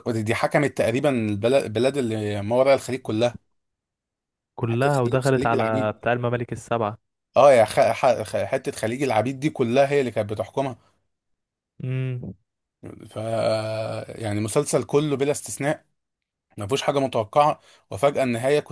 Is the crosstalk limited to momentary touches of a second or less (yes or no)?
no